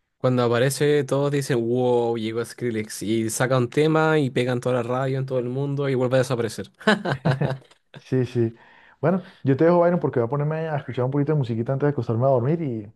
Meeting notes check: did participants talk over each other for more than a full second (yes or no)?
no